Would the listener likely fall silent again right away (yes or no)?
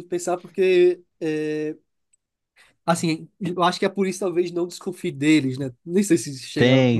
no